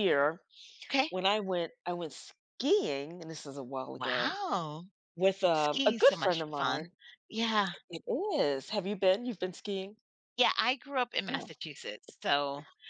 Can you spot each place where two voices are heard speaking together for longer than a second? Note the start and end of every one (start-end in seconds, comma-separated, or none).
5.5-6.9